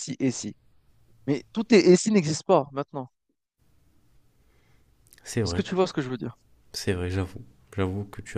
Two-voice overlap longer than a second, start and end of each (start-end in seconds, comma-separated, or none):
none